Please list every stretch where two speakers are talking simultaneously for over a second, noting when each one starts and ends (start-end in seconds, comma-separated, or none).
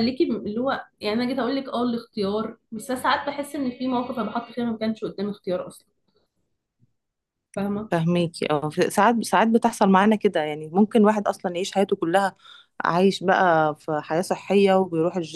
none